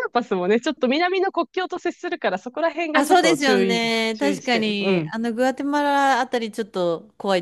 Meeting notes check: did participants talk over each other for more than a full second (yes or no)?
yes